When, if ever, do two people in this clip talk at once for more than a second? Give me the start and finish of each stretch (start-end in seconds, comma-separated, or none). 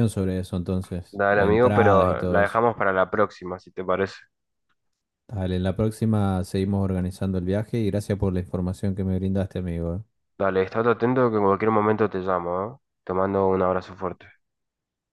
1.1-2.6